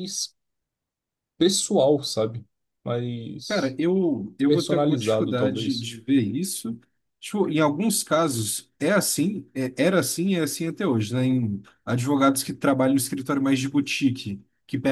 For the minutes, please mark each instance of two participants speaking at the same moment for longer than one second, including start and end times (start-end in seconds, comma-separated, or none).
4.5-5.9